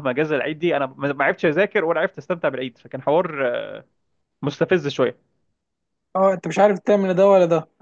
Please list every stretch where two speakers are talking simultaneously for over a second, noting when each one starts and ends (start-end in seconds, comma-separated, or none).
none